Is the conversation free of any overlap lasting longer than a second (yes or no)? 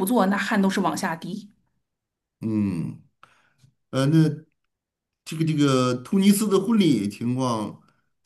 yes